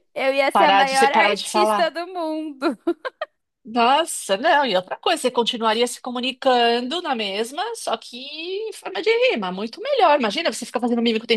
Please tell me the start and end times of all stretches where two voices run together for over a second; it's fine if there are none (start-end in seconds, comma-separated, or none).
0.5-1.9